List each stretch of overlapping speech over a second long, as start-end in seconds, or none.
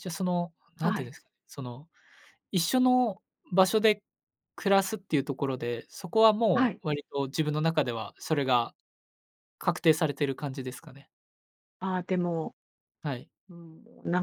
none